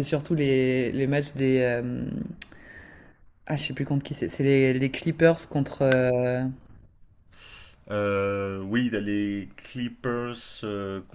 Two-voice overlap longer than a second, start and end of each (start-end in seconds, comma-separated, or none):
none